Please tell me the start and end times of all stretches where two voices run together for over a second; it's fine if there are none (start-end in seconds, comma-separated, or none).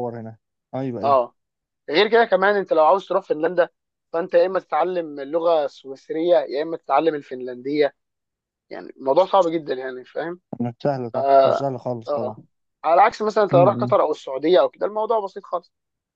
11.1-12.4